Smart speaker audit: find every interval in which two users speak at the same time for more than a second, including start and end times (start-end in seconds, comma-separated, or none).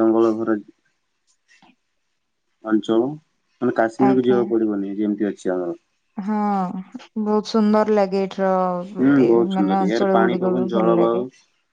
9.0-11.2